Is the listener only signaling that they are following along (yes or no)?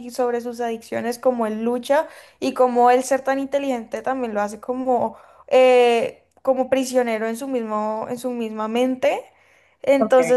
yes